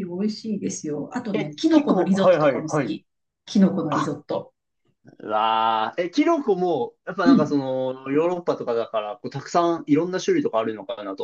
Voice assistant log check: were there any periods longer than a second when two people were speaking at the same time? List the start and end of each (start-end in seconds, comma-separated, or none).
1.3-3.0